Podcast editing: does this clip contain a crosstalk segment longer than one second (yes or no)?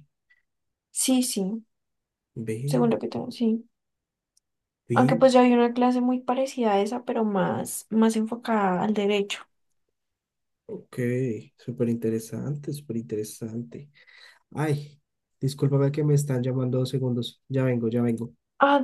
no